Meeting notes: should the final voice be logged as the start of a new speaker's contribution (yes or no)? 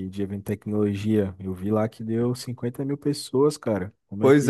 yes